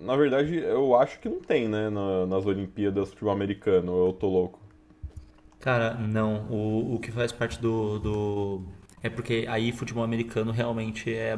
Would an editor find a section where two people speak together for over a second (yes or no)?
no